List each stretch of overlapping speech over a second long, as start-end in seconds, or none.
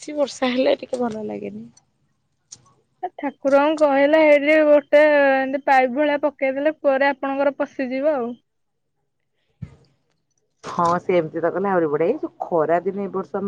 none